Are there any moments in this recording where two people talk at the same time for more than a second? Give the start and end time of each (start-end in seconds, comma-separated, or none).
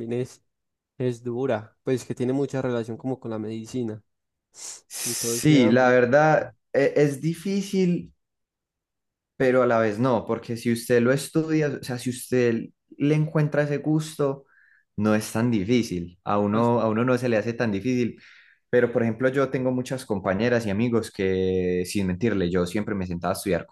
5.0-6.5